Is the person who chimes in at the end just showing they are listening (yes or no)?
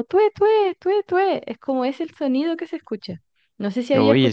yes